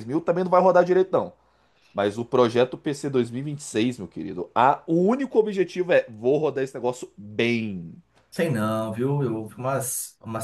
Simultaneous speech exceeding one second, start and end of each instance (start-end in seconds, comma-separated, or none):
none